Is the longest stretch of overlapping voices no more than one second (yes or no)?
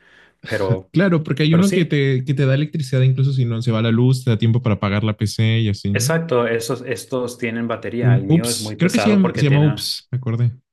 no